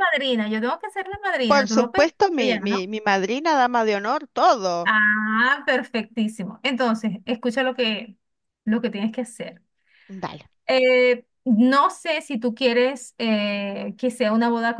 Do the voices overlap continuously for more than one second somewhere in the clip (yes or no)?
yes